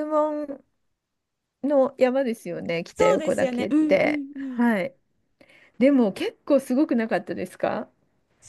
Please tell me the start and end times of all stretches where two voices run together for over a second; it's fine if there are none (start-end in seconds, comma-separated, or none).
2.9-4.6